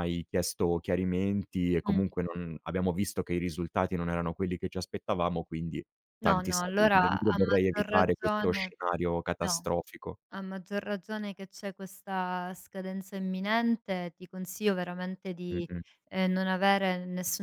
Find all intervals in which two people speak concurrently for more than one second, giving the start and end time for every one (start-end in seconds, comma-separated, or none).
6.2-8.7